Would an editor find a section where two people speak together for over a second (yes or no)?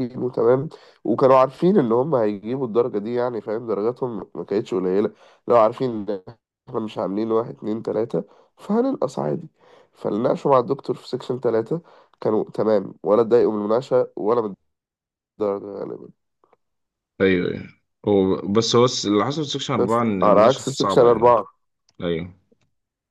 yes